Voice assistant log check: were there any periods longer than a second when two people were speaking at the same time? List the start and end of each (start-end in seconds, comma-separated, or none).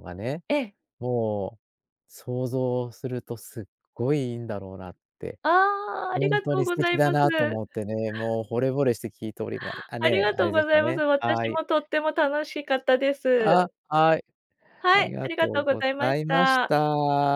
6.1-7.6, 10.0-11.6, 14.9-16.7